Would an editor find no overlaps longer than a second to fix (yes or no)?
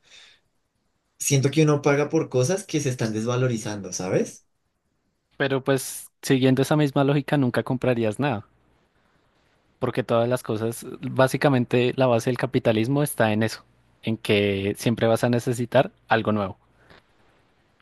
yes